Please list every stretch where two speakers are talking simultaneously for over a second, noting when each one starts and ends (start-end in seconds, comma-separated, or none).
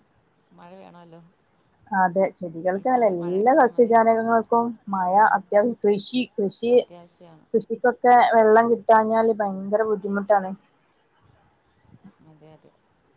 none